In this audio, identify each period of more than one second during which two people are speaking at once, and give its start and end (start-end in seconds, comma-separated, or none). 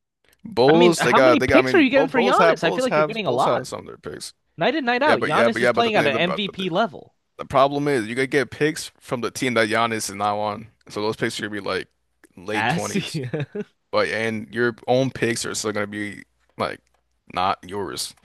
0.7-3.6, 5.0-6.7